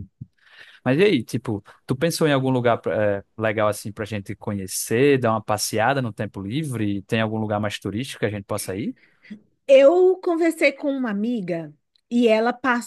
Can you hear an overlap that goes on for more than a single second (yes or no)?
no